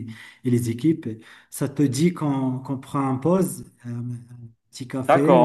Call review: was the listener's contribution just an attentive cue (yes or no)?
no